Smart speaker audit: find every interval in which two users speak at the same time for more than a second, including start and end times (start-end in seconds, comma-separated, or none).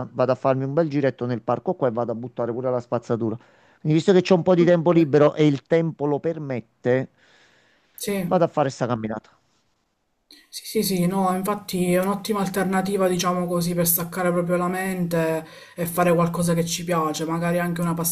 none